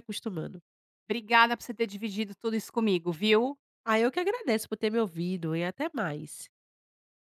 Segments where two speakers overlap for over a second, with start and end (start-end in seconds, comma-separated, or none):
none